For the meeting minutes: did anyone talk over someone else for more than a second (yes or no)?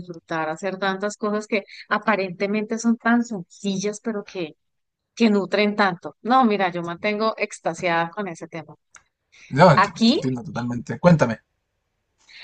no